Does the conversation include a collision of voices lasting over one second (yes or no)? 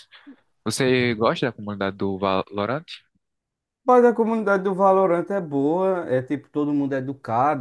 no